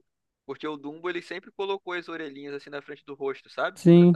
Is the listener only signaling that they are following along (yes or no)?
no